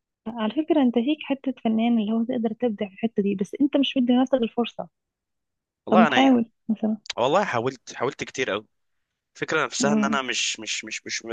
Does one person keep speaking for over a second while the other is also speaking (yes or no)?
no